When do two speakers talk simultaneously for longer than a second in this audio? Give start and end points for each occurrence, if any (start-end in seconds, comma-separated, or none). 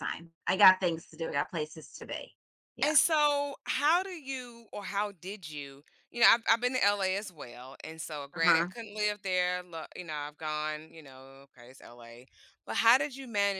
none